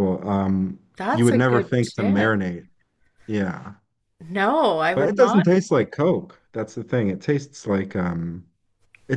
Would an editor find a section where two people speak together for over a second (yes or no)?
yes